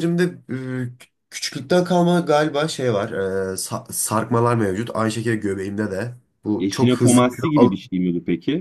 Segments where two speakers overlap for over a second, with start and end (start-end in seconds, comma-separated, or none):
6.6-7.9